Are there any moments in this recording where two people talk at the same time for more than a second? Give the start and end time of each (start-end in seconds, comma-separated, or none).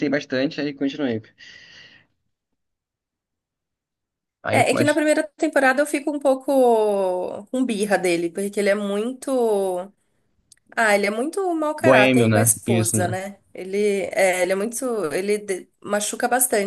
11.8-13.2